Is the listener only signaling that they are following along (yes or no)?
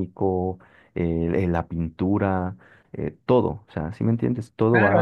no